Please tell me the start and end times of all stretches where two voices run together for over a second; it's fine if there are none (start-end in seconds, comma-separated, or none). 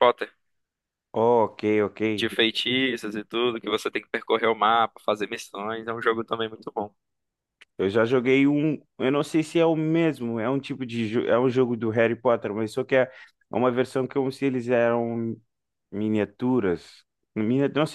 none